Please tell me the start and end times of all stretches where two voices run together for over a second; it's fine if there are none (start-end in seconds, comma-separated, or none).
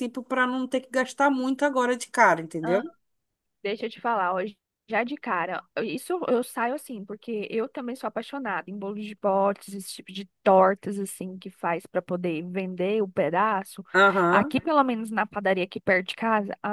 none